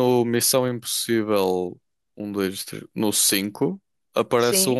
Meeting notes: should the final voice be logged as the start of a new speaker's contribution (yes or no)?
no